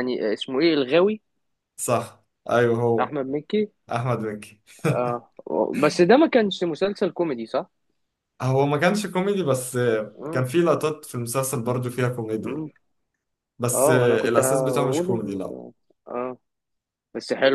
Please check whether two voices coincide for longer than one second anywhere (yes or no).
yes